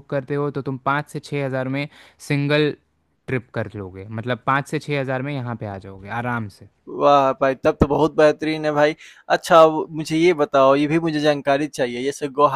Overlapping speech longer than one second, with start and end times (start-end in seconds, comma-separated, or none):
none